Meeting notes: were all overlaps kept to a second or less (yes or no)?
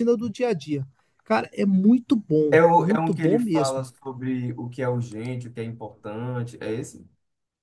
no